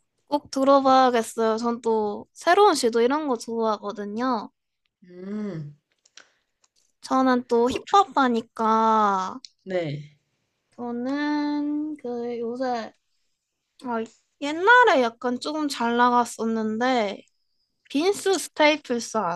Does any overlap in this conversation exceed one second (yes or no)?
no